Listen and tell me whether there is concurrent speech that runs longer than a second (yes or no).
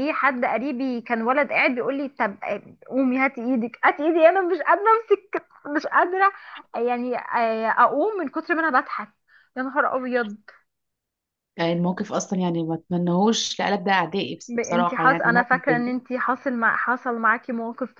yes